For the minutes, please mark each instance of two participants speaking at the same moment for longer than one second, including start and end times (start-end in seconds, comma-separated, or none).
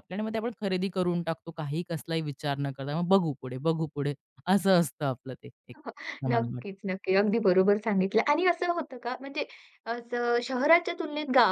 none